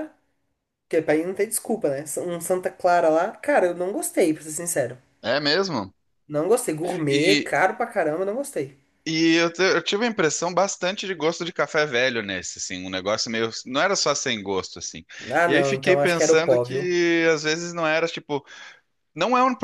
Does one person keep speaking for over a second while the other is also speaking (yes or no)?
yes